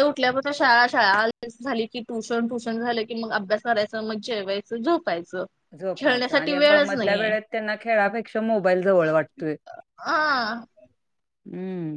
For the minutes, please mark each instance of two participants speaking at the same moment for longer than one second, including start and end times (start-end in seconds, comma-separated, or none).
6.0-7.3